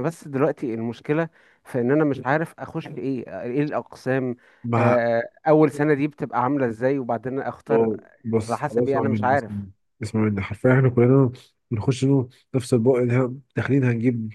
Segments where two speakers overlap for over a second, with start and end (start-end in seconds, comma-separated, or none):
8.5-9.7